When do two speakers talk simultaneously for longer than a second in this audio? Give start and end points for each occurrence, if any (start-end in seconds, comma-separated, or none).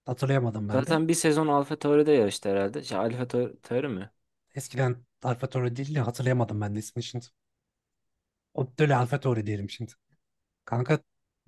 none